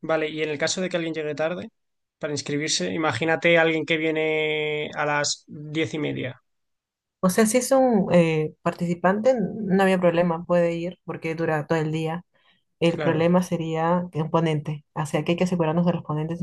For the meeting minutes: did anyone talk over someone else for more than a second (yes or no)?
no